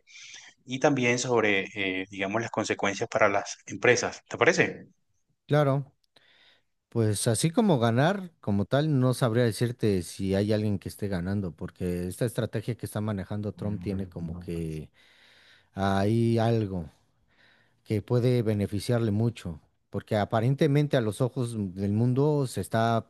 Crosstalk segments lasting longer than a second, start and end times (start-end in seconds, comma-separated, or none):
none